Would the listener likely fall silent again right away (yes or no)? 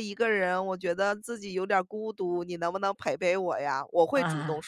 yes